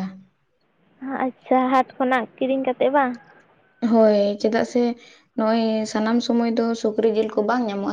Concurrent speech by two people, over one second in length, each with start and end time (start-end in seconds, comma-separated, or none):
none